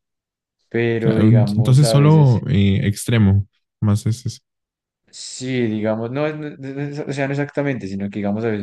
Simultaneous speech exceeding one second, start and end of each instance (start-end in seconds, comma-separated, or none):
1.0-2.4